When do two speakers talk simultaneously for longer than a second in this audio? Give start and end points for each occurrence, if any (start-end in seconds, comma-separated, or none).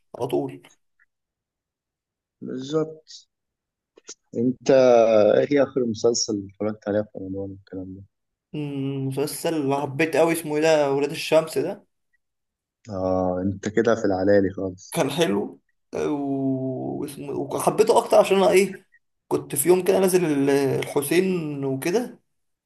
none